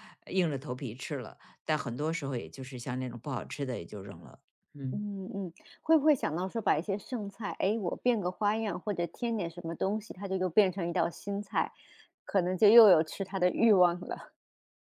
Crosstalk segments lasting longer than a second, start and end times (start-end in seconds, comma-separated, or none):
none